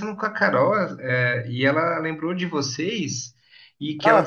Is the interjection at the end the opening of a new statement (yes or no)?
no